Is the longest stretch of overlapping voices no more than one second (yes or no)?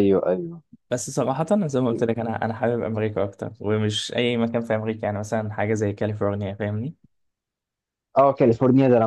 yes